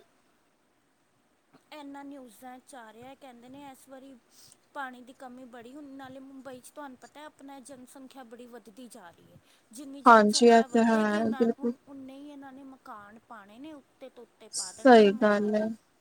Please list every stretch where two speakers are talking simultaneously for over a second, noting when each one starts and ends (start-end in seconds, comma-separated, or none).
10.1-11.7